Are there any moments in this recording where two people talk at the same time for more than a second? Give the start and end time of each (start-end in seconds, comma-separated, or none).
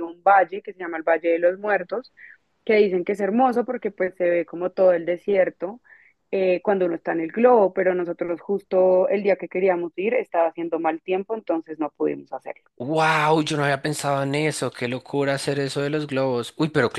none